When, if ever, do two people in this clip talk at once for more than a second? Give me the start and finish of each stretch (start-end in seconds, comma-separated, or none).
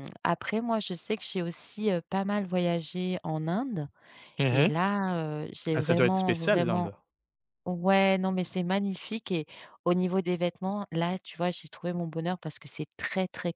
5.7-6.9